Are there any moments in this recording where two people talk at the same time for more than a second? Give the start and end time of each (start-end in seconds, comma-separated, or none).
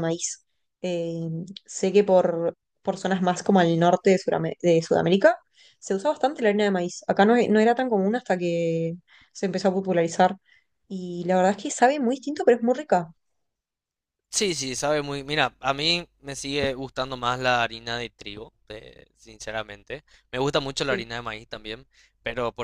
none